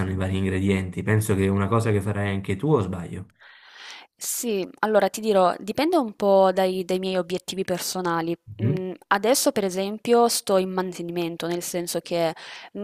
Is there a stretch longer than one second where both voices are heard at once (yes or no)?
no